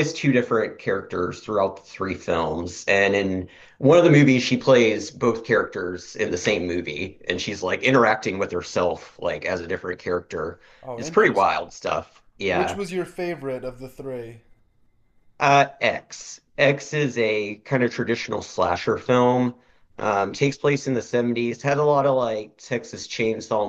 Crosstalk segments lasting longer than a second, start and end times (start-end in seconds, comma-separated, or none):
none